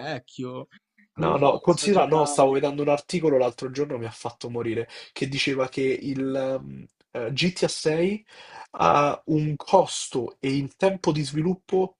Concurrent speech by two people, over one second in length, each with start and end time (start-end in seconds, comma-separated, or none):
1.2-2.6